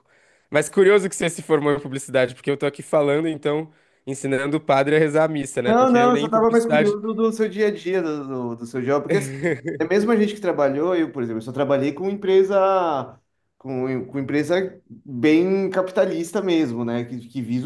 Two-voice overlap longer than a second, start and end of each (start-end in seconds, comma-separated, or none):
5.7-6.9